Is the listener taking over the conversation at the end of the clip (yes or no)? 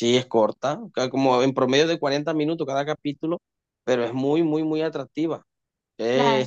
no